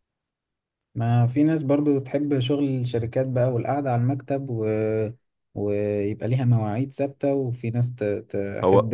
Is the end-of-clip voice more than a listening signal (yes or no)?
no